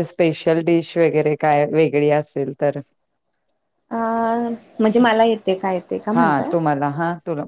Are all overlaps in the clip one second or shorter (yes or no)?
yes